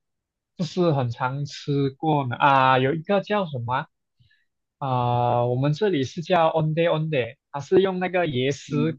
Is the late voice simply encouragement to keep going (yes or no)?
yes